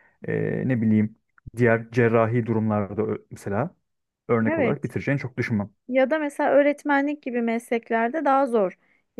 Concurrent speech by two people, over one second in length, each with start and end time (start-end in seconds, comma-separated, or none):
none